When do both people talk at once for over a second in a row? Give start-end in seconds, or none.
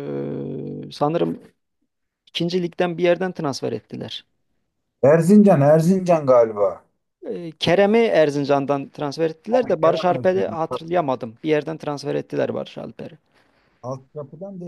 9.5-11.0